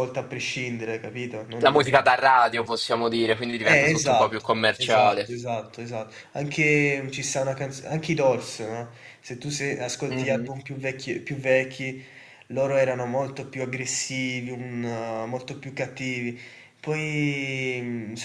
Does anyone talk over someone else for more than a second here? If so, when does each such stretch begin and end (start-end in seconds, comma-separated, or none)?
3.6-5.3